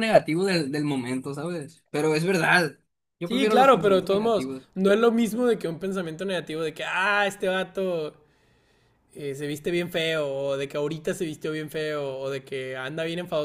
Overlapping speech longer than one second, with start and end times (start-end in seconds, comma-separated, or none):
3.2-4.7